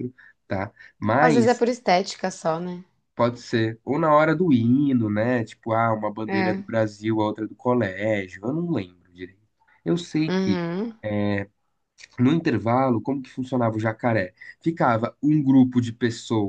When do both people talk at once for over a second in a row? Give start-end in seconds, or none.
none